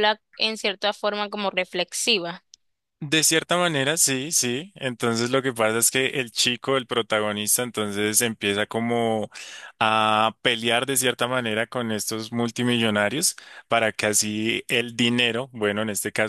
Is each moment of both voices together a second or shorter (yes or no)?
yes